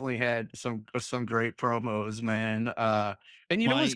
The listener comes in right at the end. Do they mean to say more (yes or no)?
no